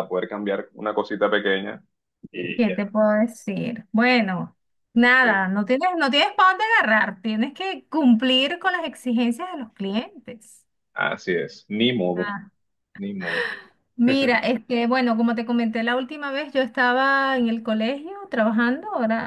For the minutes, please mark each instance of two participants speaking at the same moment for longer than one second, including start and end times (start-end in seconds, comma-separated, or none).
none